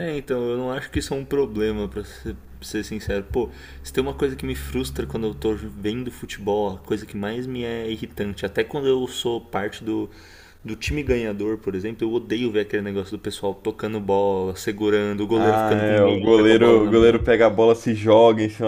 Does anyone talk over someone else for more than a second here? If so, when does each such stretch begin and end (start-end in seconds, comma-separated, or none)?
15.4-17.2